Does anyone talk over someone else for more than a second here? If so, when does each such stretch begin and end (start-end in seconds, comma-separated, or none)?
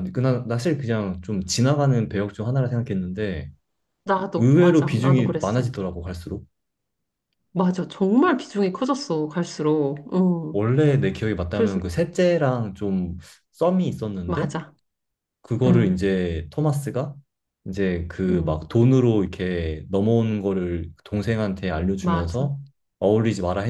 4.3-5.6